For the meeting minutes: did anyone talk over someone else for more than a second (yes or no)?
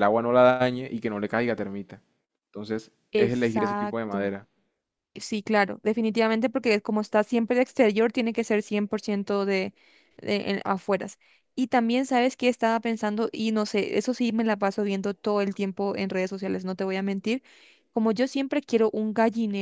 yes